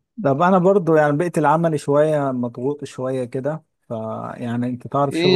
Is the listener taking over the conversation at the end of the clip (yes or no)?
yes